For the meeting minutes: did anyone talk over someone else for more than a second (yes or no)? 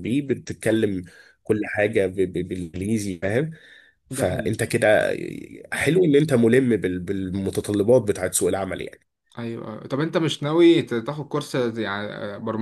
no